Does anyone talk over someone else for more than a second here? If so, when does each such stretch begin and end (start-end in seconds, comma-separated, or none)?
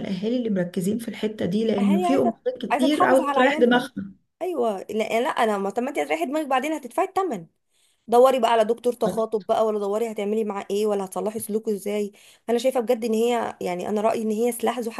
1.8-3.9